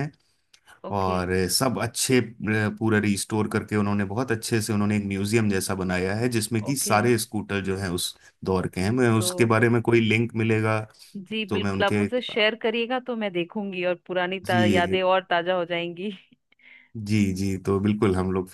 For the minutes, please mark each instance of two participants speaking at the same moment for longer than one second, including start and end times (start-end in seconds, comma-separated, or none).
none